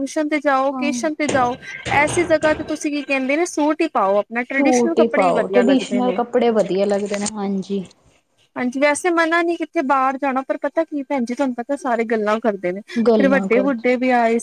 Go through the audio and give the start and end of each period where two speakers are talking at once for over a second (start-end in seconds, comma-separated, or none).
4.5-6.2